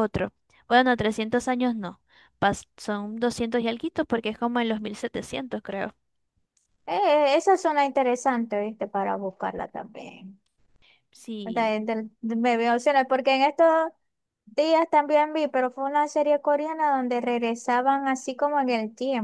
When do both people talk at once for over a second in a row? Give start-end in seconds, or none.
none